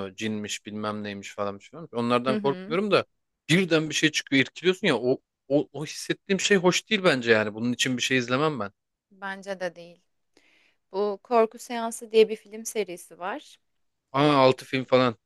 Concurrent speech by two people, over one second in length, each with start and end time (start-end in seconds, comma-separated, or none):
none